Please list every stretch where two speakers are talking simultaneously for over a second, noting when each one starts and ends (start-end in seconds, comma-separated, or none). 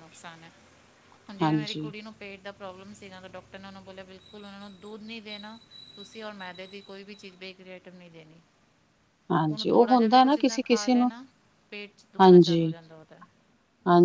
9.5-11.1